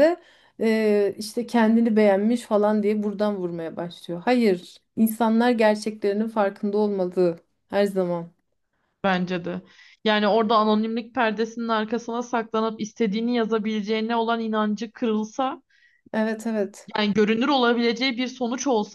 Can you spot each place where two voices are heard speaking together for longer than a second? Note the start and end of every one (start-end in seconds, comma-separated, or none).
none